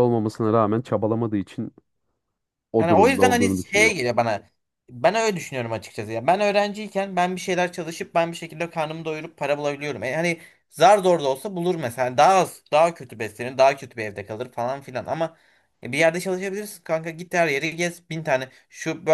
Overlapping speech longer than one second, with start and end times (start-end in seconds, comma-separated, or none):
2.8-4.1